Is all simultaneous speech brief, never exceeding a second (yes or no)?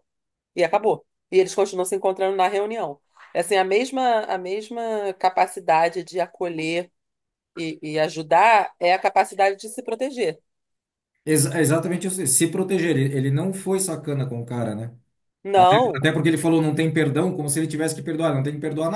yes